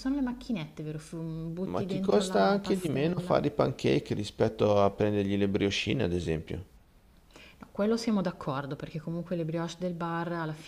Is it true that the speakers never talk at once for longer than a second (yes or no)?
no